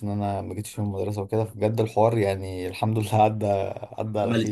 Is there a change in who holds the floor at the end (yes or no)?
yes